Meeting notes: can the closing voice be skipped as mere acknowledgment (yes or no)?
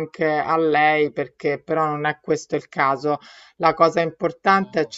yes